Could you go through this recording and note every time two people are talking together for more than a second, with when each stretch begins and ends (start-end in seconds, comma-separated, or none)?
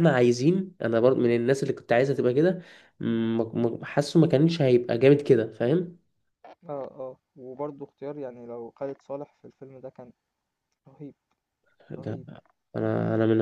none